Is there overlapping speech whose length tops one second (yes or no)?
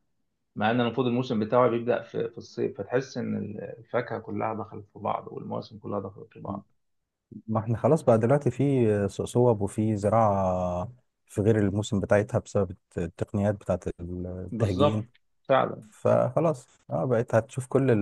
no